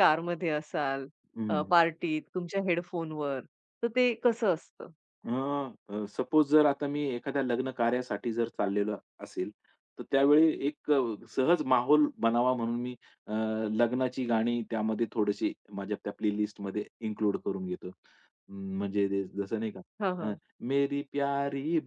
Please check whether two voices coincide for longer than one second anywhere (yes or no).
no